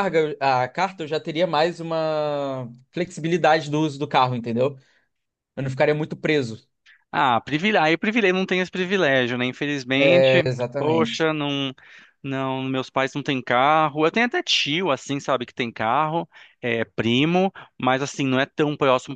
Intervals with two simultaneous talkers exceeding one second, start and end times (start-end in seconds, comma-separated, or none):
9.9-11.3